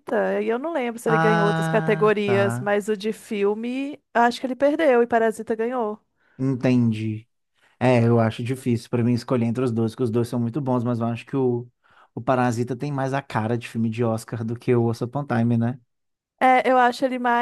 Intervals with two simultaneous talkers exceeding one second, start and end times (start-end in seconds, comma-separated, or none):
1.1-2.8